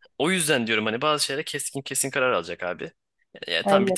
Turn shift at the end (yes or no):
no